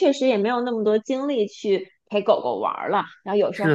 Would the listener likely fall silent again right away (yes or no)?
no